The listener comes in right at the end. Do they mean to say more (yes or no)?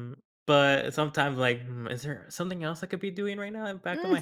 yes